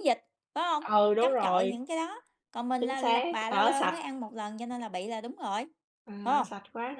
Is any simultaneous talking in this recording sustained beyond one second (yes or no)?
yes